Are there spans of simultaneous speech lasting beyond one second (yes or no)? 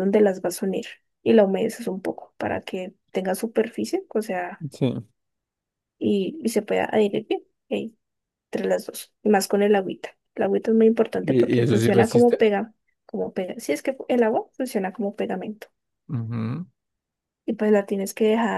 yes